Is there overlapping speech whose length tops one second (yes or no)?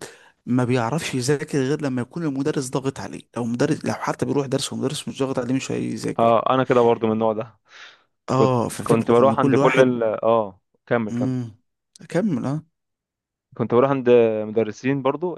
yes